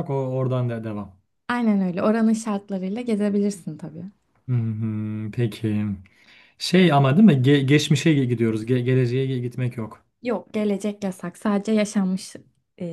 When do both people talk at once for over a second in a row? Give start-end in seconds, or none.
none